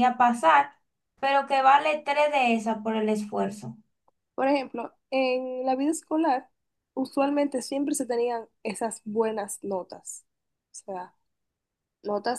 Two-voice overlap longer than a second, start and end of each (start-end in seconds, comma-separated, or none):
none